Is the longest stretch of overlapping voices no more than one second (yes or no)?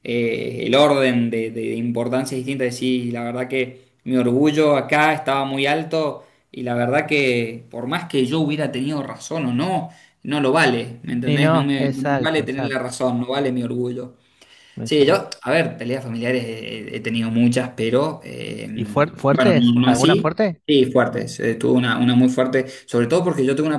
no